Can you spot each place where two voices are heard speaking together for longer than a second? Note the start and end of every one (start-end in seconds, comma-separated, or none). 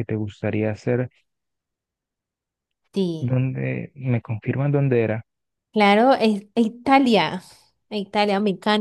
none